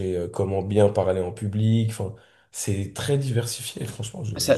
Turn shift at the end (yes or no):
yes